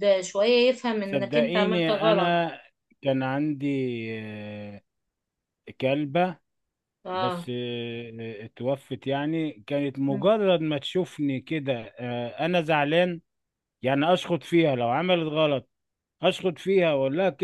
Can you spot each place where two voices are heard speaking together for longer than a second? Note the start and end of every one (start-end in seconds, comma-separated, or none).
1.0-2.4